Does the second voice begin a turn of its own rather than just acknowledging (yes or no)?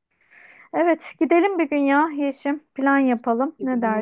yes